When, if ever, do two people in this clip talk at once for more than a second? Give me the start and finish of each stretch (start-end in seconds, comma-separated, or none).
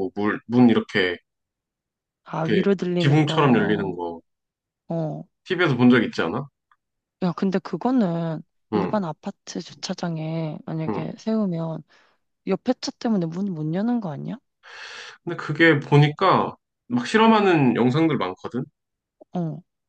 2.5-4.0